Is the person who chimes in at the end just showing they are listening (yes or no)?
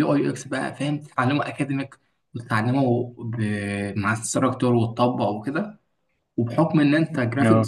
yes